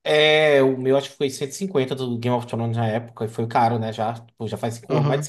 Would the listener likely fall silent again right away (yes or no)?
no